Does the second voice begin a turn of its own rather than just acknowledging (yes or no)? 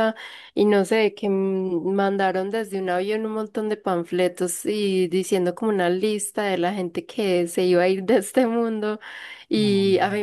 no